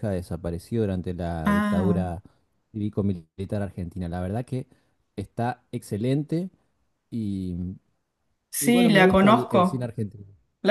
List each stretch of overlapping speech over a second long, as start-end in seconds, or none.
8.6-9.9